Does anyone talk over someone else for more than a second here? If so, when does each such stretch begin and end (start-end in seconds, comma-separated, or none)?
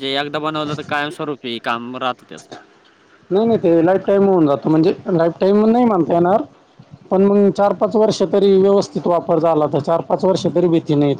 none